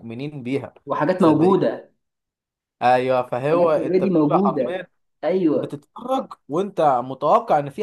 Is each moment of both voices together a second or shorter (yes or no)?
no